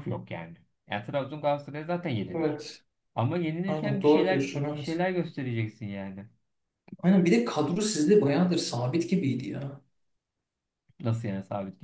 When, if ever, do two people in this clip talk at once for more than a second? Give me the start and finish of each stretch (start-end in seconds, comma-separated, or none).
3.7-5.0